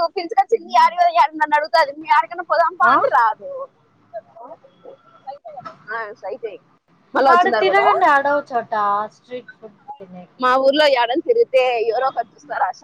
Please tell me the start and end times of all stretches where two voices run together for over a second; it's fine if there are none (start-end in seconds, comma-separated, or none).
none